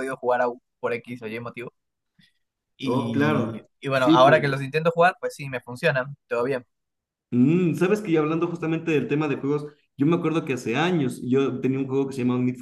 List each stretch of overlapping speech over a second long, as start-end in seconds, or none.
2.8-4.4